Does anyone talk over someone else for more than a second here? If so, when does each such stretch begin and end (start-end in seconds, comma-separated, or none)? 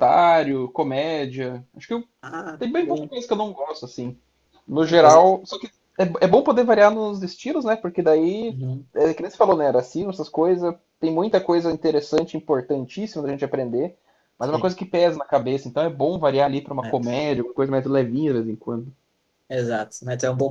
none